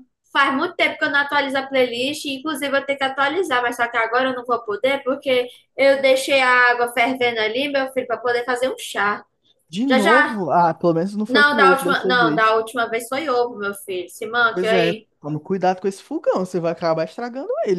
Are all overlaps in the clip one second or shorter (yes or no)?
no